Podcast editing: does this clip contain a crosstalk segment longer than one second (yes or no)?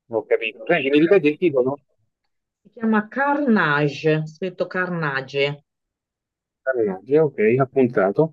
no